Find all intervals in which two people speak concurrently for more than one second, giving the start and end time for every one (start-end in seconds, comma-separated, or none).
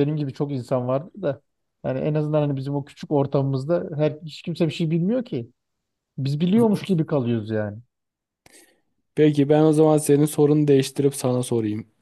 none